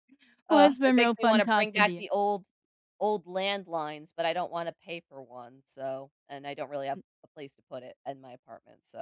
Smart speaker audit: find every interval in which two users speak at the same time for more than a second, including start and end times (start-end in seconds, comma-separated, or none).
0.5-2.1